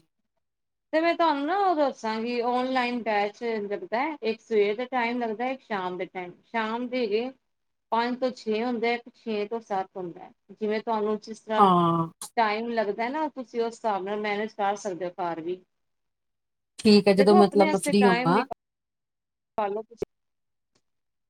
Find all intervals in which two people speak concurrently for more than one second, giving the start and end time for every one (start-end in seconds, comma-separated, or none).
17.2-18.4